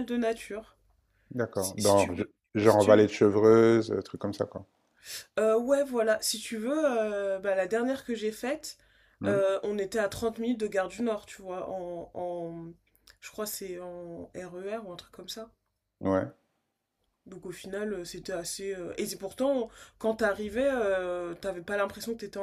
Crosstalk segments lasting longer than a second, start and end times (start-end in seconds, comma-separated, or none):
1.5-3.1